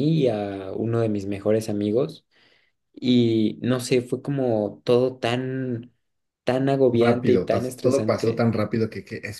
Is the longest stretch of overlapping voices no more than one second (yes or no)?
no